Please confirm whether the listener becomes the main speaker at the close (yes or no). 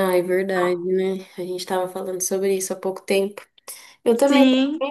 no